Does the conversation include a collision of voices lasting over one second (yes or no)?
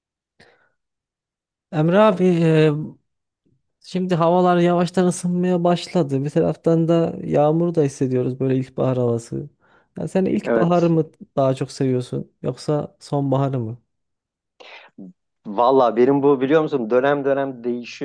no